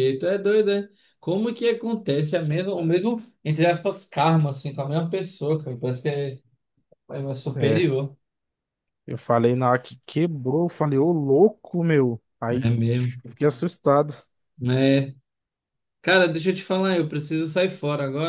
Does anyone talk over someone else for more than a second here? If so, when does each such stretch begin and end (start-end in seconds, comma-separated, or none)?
none